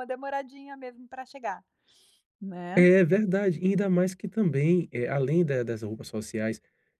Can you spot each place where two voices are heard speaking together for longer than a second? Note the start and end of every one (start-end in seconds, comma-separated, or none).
none